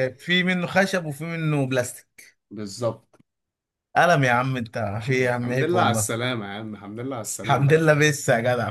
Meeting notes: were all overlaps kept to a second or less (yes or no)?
no